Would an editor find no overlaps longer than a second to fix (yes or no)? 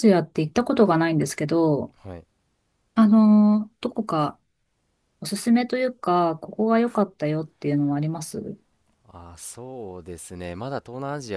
yes